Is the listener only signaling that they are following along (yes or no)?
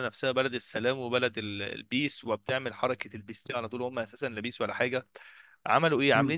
yes